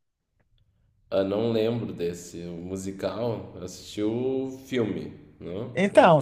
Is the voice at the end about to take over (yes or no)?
yes